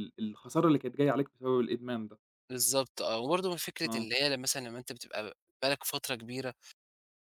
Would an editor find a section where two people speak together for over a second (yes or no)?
no